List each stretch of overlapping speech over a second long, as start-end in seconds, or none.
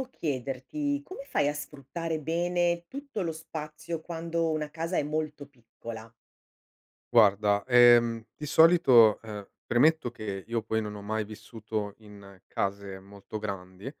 none